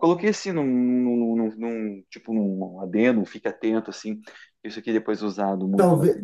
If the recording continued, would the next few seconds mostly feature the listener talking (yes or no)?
yes